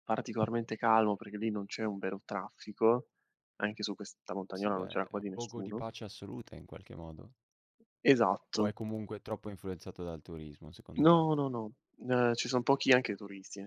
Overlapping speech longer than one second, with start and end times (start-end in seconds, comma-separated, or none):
4.5-5.8